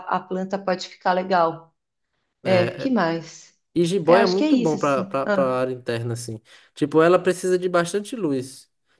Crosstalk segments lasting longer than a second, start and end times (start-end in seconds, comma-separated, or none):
4.0-5.6